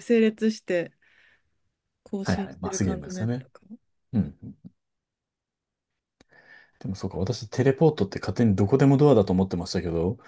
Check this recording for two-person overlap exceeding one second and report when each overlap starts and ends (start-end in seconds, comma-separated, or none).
2.2-3.5